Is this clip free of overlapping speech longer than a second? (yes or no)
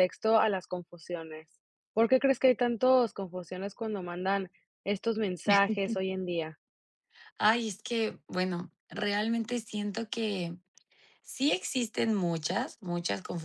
yes